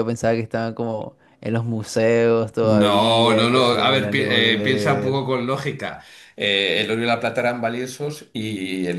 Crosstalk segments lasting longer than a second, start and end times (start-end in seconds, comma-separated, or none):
2.6-5.2